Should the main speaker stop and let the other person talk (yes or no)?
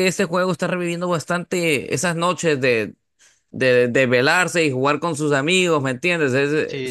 yes